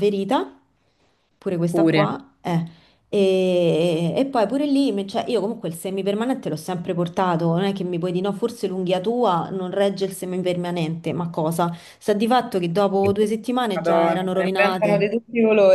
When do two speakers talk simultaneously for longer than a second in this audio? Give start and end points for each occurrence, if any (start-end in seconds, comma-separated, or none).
13.7-15.0